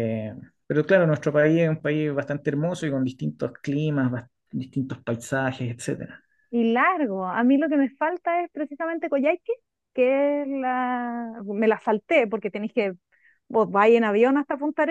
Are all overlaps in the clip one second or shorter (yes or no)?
yes